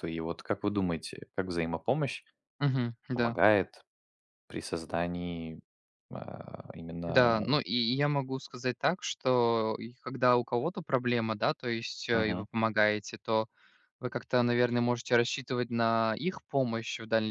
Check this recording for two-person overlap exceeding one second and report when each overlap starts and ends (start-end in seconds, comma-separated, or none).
none